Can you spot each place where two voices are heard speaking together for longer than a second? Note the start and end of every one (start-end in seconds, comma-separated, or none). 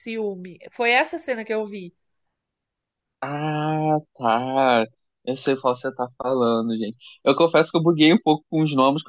none